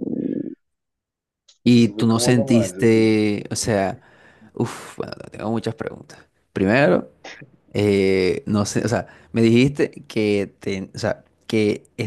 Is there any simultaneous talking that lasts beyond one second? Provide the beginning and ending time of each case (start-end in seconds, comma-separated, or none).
1.7-3.2